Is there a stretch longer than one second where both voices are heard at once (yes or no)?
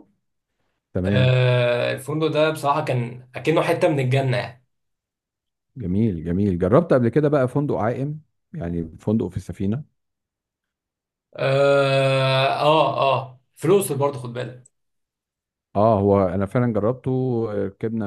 no